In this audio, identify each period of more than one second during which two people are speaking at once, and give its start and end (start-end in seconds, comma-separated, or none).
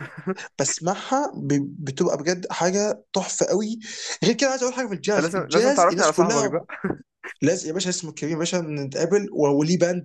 5.1-6.6